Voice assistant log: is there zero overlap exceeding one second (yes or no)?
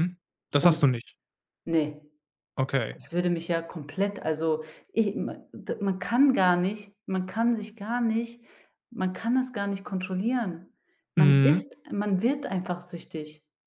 yes